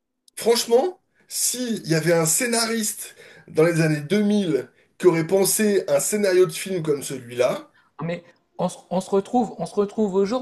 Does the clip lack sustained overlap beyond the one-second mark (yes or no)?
yes